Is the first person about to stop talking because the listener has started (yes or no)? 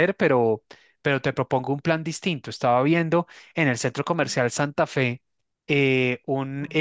no